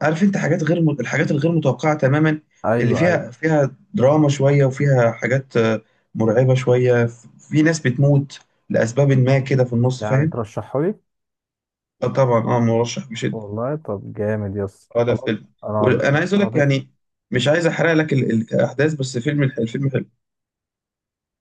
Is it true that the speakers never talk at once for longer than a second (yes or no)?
no